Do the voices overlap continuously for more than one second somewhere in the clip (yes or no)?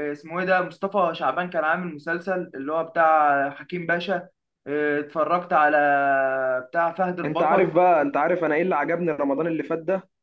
no